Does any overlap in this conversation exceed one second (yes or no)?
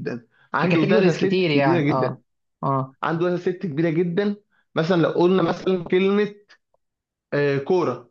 yes